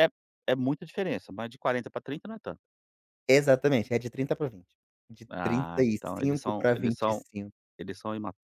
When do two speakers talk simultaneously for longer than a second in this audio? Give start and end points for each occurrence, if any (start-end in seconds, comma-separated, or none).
5.3-7.2